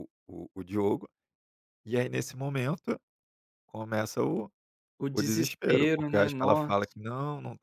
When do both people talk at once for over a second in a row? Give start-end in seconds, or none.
5.1-6.8